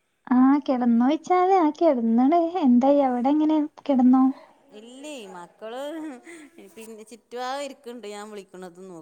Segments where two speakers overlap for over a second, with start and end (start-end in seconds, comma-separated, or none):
none